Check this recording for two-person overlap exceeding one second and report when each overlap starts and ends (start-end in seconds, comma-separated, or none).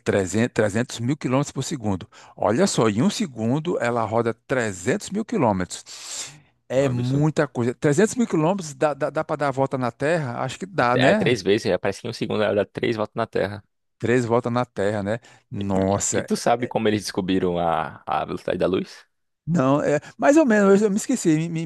none